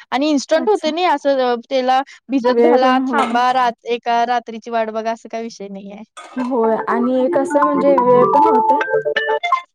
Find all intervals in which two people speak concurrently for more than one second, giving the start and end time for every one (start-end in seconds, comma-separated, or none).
none